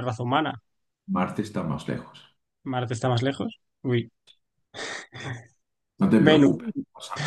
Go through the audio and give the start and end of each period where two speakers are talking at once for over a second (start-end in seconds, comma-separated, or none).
none